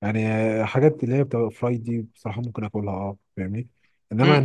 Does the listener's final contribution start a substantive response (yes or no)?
yes